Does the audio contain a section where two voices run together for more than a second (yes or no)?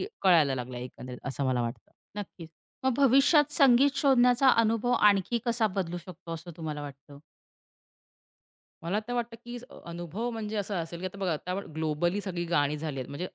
no